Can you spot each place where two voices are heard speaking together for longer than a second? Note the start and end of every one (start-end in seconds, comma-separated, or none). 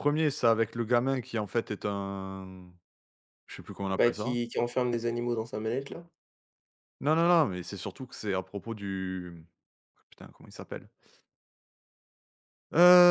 none